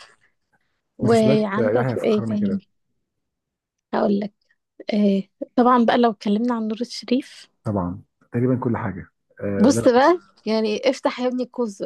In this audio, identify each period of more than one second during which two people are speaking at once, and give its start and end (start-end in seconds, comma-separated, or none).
1.0-2.6